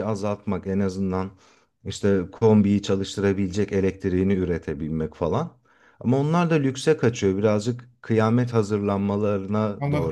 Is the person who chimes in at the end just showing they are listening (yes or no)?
no